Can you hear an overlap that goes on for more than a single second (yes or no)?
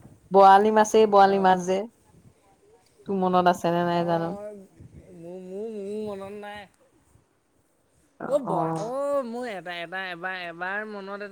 no